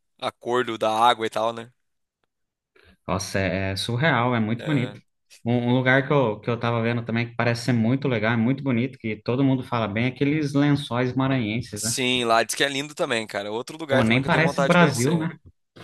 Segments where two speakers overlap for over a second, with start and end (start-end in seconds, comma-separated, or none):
13.9-15.3